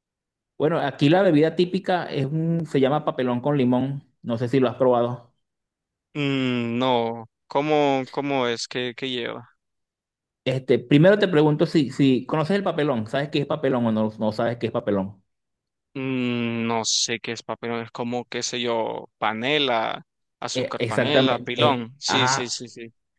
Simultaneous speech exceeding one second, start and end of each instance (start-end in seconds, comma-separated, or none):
20.5-22.6